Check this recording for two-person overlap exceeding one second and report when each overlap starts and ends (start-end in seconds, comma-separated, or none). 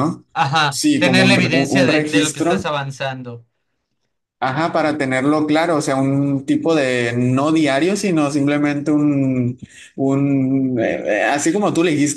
0.7-2.6